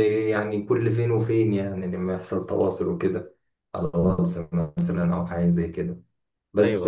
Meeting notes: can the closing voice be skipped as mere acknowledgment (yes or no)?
yes